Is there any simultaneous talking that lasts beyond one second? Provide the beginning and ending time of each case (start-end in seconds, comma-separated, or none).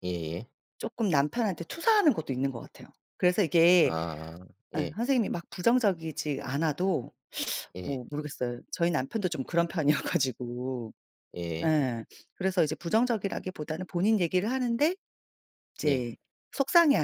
none